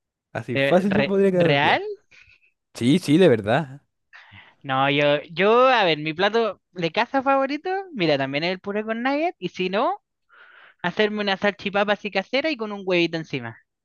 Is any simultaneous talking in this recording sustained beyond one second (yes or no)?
yes